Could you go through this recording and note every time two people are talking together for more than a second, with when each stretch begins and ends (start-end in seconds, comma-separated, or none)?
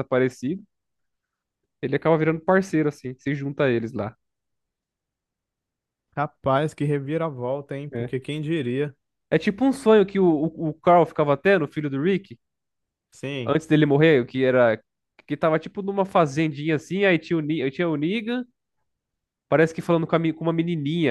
none